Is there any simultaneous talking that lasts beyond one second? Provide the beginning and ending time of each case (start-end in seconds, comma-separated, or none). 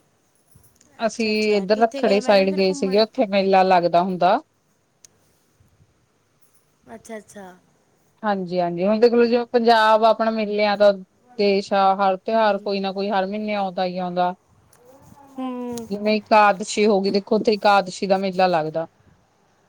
1.1-3.0